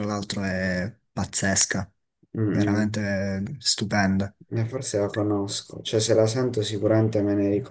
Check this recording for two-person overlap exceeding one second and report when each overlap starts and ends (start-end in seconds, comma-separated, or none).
none